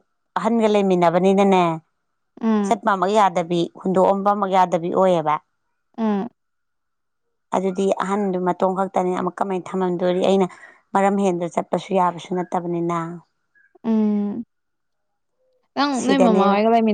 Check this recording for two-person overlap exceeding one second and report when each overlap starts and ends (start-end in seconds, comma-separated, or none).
none